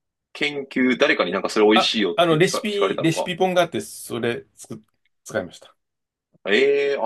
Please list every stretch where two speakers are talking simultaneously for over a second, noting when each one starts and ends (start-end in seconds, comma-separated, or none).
1.7-3.3